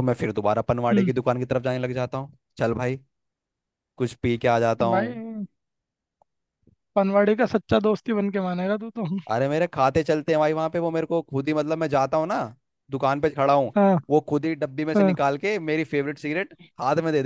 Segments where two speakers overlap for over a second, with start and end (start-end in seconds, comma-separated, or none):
none